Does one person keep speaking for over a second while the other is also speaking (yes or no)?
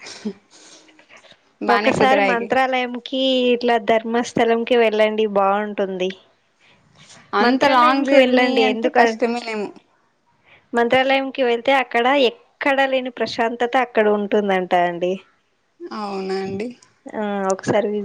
yes